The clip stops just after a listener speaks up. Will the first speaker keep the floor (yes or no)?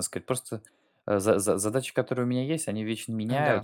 yes